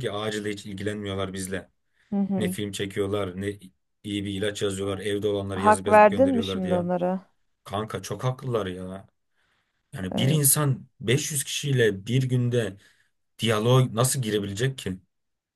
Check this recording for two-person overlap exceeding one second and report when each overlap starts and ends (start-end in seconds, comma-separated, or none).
5.5-6.8